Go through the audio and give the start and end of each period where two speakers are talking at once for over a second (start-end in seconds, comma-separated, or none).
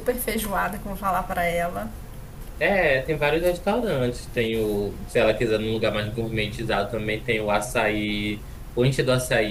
none